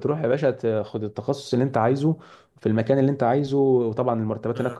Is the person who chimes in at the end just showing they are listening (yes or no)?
yes